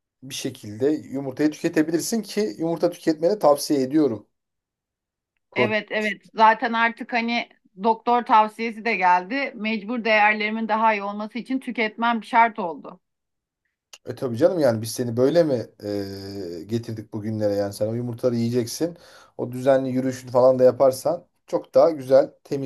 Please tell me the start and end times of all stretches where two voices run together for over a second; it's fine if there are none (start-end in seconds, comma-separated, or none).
none